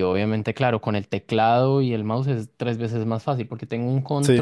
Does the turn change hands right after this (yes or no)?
no